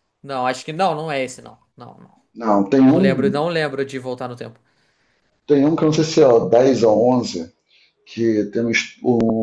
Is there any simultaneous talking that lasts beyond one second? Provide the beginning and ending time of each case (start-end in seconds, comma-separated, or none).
none